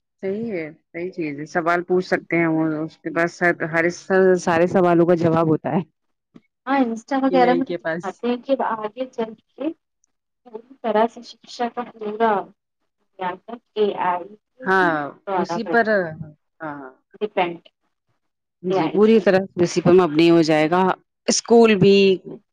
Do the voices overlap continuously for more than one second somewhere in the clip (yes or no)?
no